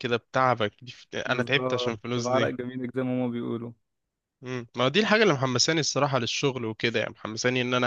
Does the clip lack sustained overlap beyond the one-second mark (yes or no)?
no